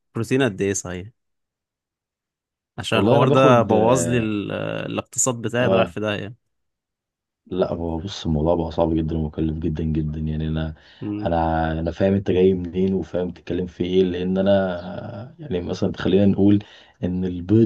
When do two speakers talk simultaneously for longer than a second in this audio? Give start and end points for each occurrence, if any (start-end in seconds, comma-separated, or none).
2.9-4.3